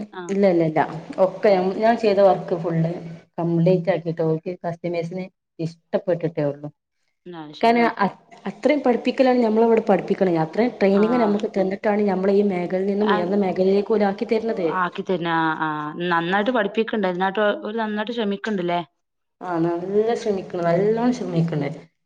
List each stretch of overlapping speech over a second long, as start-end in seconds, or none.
none